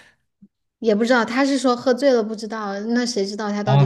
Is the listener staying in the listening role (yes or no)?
no